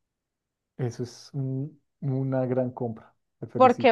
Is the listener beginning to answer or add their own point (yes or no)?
yes